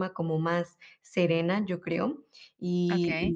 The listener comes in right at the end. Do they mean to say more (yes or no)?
no